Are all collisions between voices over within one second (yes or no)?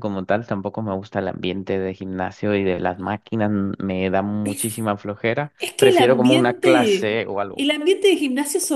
no